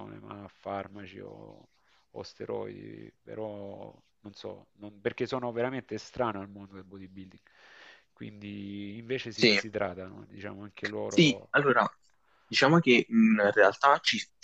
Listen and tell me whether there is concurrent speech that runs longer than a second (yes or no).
no